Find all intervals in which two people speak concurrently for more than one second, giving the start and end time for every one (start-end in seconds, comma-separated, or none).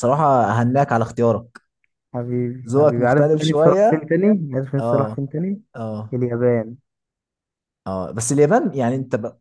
2.7-4.1